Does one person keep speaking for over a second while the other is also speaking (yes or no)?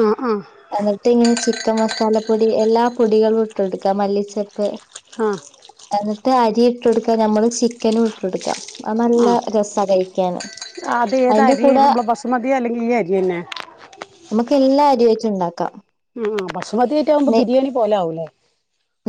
no